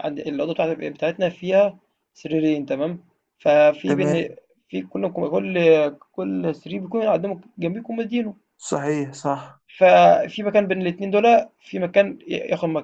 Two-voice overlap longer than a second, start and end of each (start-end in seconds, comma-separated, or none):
none